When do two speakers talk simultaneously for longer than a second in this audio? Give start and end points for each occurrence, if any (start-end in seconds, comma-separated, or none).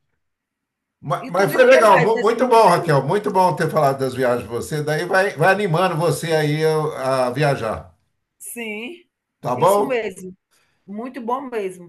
1.2-2.9